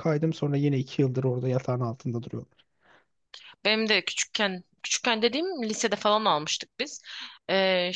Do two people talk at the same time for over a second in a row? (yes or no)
no